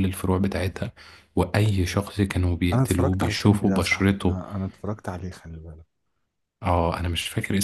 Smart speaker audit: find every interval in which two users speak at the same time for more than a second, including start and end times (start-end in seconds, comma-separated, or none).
2.7-4.4